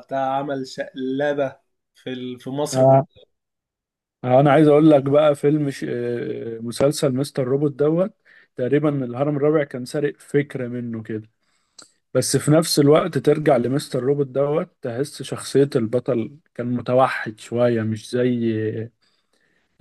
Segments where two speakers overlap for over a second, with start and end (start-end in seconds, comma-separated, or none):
none